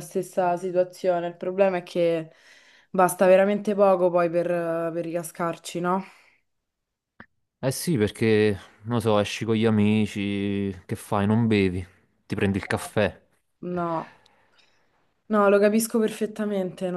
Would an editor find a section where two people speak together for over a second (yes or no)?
no